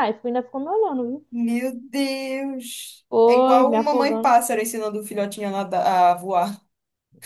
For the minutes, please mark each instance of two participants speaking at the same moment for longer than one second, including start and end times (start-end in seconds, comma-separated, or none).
3.1-4.3